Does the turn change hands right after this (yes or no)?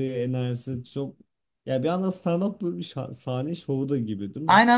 yes